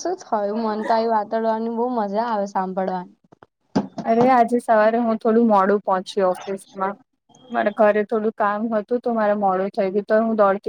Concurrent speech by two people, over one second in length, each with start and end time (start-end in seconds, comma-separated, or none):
none